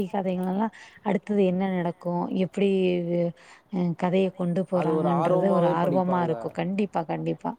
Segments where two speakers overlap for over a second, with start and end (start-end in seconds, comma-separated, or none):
4.8-6.6